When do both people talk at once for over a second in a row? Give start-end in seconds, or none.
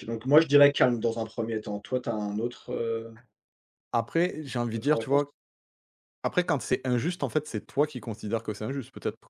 none